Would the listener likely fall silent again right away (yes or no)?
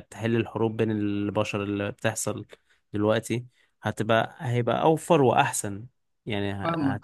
yes